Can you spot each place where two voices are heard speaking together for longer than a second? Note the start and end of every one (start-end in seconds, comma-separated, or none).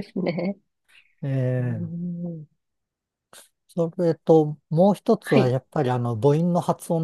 none